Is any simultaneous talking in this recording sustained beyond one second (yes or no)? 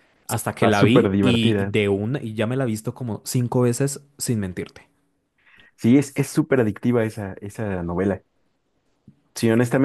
yes